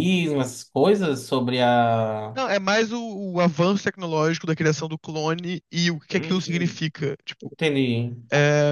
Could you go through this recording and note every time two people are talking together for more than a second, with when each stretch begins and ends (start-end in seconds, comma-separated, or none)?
none